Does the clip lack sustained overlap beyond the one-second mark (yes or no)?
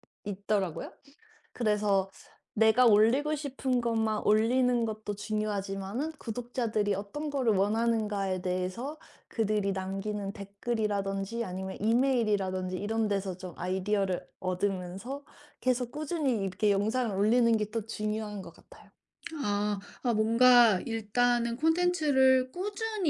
yes